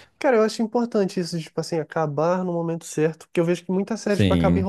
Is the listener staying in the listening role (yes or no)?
yes